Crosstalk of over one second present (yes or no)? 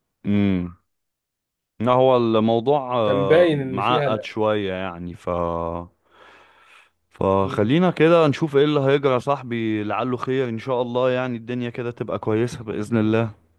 yes